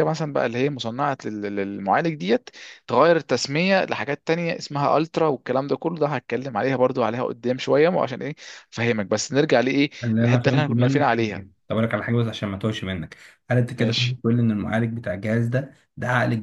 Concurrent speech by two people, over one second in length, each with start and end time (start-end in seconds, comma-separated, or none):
10.0-11.4